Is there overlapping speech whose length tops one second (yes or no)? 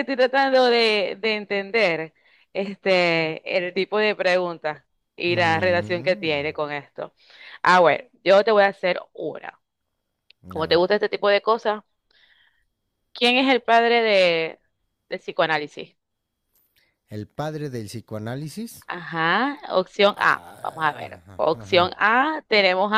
yes